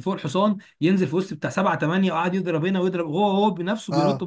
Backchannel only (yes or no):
no